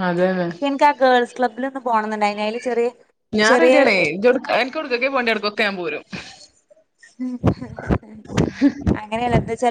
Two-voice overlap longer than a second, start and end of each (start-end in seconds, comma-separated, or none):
none